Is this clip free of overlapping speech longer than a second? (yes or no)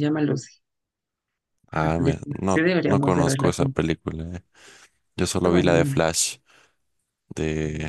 no